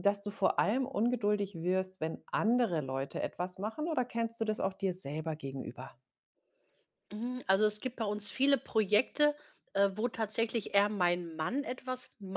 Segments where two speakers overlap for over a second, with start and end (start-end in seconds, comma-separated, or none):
none